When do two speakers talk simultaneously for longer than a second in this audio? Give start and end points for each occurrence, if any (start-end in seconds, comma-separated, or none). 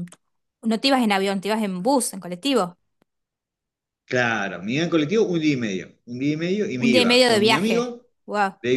6.8-8.1